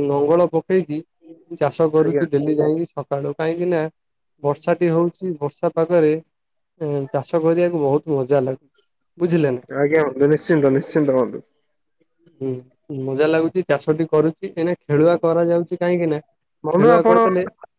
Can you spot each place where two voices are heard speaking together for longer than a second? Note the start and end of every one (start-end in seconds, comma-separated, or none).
none